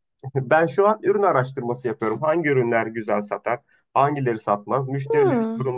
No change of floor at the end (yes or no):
yes